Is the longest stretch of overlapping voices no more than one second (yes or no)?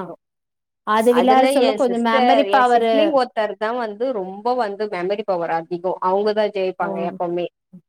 no